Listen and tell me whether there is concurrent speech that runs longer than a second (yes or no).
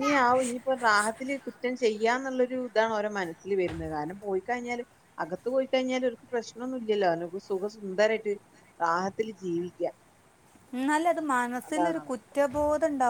no